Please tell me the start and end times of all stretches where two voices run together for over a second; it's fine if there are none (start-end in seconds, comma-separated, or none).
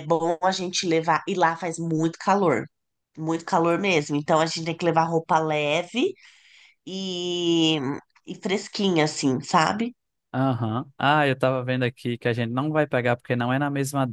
none